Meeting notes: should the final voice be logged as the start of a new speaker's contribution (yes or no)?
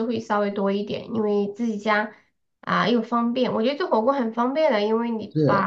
no